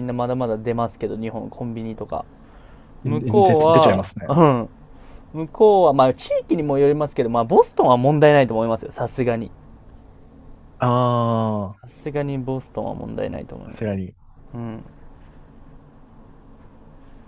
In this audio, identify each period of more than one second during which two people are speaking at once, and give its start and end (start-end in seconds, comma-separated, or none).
3.0-4.4